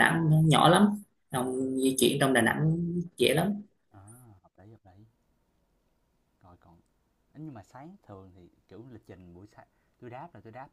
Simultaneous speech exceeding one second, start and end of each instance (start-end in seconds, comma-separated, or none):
none